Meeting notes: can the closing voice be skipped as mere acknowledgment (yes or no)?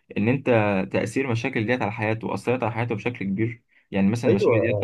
no